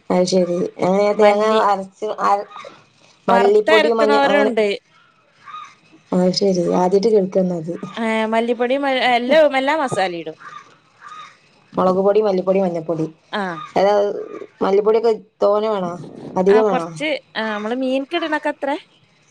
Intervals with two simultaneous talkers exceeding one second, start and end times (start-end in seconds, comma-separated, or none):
3.3-4.5